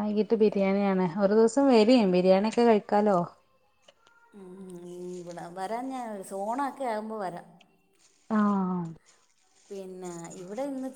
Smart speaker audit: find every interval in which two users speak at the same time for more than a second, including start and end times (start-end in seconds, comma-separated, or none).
none